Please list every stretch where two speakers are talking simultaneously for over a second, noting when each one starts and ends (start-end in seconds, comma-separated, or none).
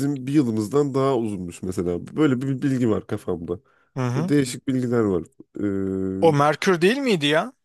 none